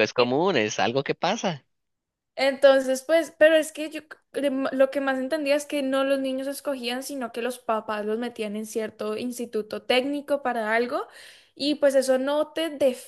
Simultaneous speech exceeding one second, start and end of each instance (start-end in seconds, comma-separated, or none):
none